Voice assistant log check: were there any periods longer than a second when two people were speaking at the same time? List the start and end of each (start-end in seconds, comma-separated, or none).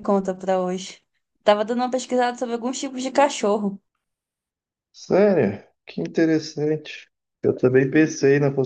none